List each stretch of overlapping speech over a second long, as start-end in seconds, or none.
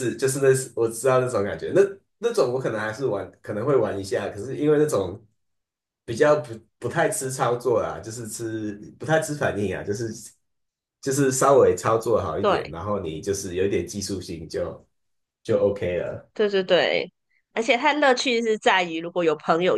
none